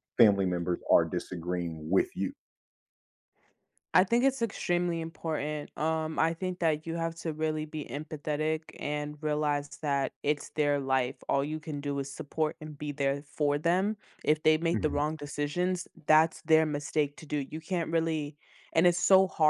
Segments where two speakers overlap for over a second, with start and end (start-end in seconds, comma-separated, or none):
none